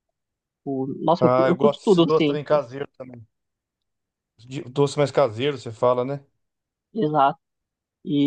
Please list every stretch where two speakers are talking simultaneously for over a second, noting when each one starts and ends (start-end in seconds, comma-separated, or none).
1.2-2.6